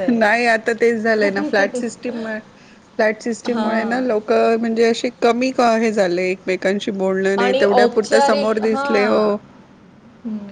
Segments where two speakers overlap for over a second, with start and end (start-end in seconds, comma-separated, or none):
7.4-9.2